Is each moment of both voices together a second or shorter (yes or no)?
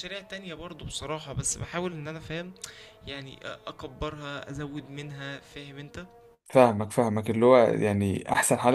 yes